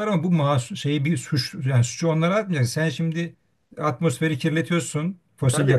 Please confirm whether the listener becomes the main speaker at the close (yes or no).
no